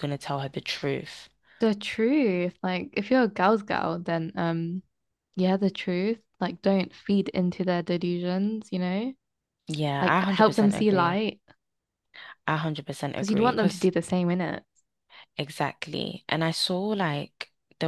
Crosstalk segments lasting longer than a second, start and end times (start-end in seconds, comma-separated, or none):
10.0-11.2